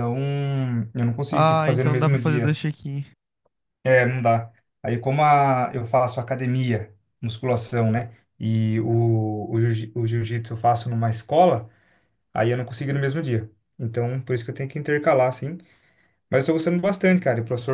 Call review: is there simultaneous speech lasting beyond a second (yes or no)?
yes